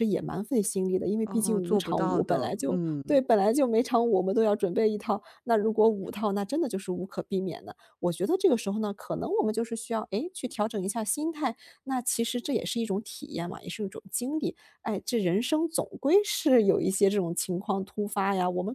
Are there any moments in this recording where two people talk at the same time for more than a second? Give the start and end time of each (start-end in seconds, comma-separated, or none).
1.2-3.0